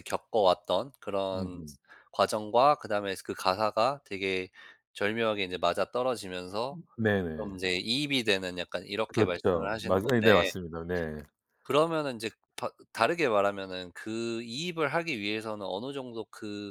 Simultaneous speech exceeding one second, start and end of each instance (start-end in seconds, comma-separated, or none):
9.1-10.5